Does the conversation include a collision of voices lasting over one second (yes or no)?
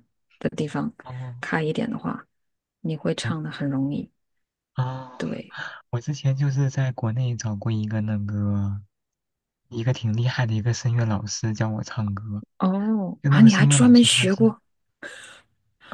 yes